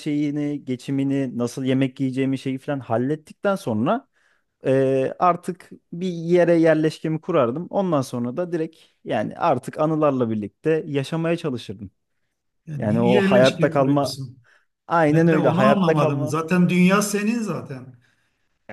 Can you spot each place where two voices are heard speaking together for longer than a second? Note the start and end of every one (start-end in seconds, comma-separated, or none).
12.8-14.1, 15.1-16.4